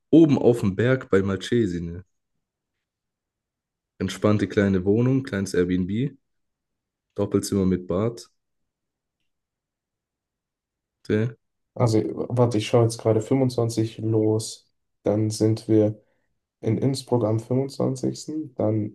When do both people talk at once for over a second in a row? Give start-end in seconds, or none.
none